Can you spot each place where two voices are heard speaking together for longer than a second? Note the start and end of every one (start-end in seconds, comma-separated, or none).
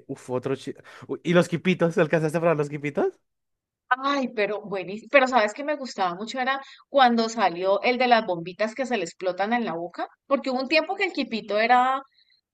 none